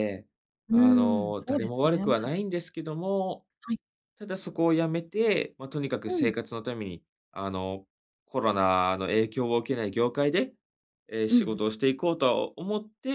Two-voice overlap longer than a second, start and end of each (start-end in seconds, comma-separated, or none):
0.7-2.0